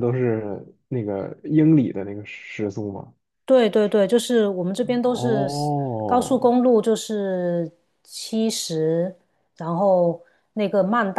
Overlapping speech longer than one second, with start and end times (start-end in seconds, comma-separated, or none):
5.0-6.5